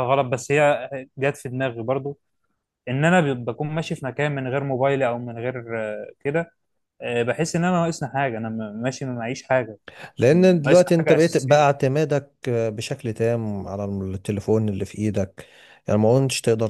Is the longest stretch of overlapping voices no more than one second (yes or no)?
no